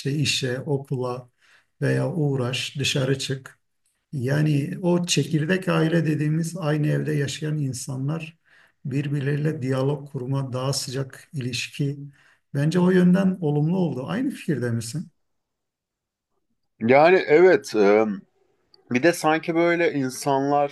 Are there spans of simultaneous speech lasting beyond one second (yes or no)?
no